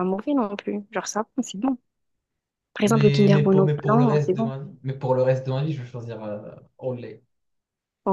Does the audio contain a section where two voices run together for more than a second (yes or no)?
yes